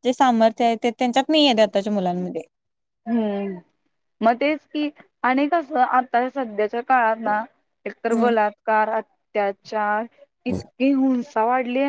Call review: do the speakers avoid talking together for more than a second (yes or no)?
yes